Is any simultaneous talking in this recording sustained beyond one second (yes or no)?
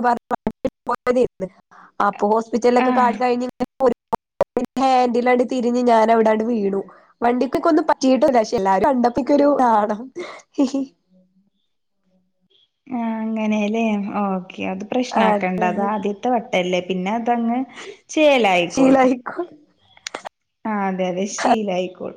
no